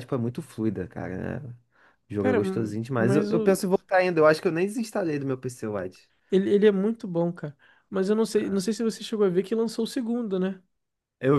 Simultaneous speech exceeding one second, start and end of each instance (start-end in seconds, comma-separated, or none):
2.2-3.6